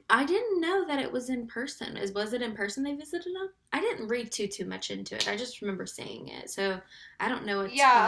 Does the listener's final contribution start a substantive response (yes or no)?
yes